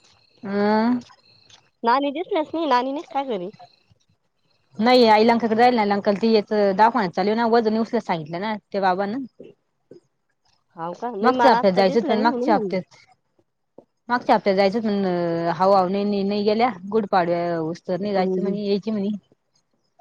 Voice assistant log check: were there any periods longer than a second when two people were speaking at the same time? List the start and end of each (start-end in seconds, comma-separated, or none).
11.2-12.8